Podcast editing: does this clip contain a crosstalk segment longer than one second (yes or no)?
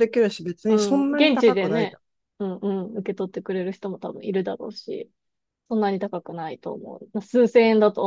yes